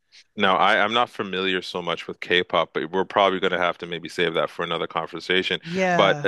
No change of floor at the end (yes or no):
yes